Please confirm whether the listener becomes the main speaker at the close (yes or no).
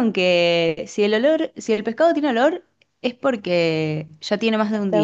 yes